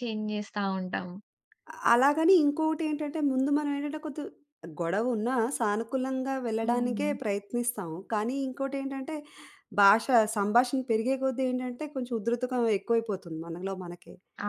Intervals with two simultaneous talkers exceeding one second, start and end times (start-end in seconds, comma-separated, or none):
none